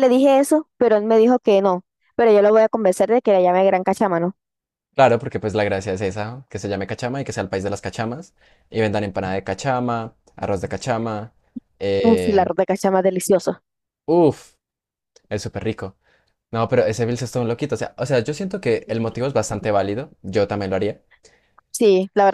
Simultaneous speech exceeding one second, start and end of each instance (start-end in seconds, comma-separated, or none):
none